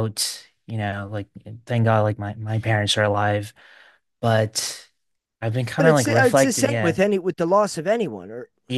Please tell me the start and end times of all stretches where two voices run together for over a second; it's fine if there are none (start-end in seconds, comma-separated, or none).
5.8-7.0